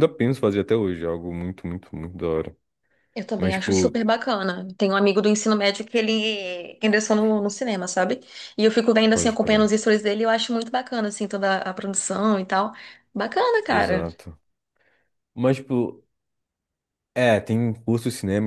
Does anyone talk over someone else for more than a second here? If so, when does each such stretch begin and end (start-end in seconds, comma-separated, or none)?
none